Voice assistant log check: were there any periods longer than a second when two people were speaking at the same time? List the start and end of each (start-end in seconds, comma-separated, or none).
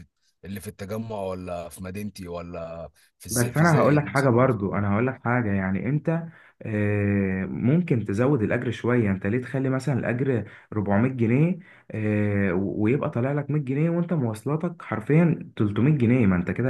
3.3-4.8